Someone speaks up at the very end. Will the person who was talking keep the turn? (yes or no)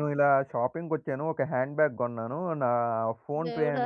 yes